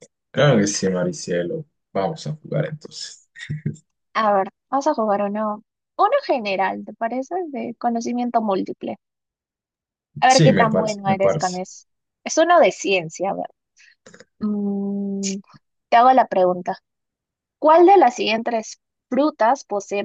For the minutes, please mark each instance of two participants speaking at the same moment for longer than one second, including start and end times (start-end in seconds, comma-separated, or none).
10.3-11.6